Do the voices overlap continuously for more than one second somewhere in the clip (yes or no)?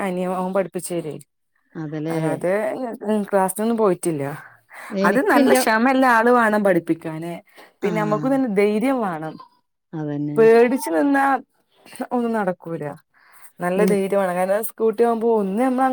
no